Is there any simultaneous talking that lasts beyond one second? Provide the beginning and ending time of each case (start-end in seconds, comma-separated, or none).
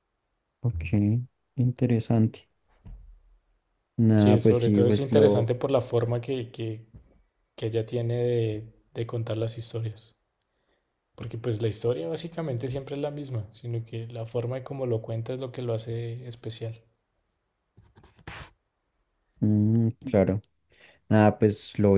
4.2-5.5